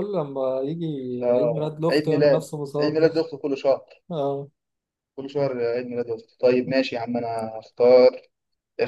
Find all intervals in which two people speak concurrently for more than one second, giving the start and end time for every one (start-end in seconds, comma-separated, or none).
1.4-3.1